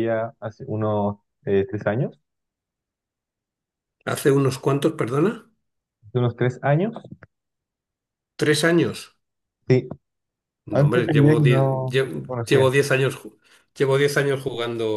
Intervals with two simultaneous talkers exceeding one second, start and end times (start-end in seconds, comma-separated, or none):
10.7-12.7